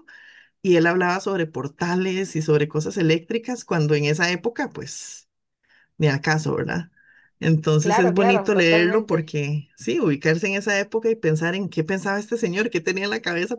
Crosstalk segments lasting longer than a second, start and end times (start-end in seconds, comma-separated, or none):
7.8-9.3